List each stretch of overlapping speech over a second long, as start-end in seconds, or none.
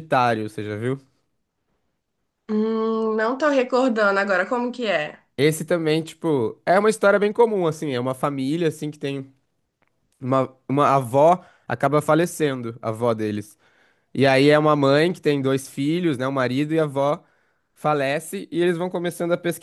none